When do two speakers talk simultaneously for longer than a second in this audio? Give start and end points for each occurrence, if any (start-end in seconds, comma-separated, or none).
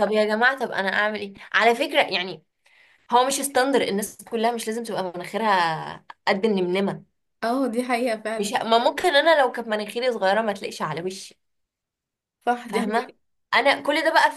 none